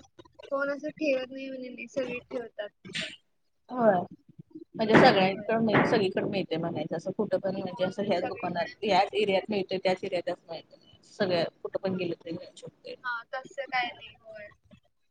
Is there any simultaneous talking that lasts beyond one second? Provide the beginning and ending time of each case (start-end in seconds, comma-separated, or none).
7.7-9.2